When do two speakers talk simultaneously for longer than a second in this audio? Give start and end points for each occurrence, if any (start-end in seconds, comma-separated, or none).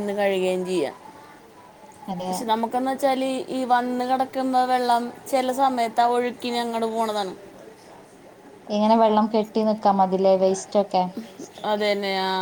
none